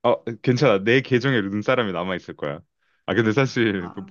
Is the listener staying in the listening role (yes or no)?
yes